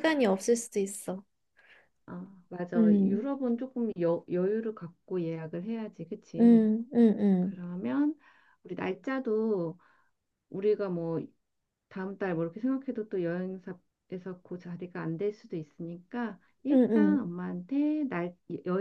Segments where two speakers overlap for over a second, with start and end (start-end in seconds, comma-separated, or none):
none